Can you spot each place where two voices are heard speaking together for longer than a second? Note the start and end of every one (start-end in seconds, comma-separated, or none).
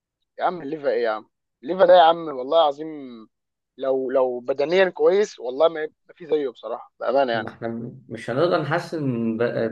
none